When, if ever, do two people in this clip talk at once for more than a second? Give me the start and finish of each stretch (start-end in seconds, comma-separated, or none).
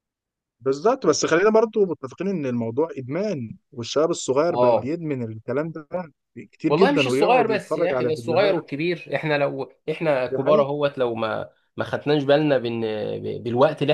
6.7-8.6